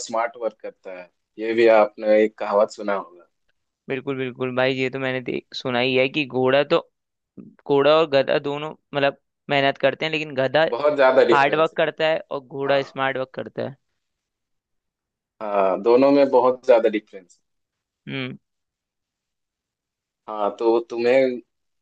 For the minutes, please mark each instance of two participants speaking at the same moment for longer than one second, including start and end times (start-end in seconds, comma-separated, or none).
none